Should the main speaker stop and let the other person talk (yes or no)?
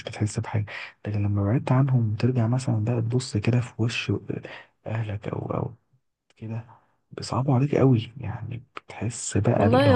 yes